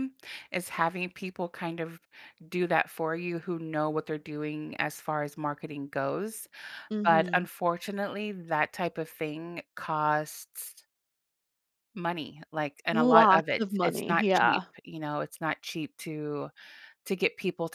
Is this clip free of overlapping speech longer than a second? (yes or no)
no